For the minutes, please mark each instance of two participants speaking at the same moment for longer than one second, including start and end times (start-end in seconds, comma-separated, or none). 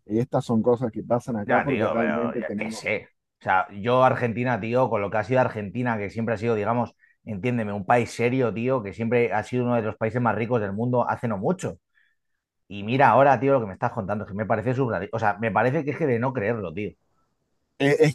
1.4-2.9